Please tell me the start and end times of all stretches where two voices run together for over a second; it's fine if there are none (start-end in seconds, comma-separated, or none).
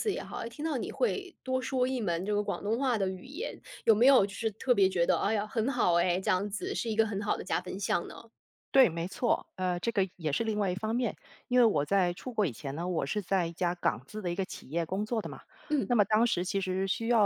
none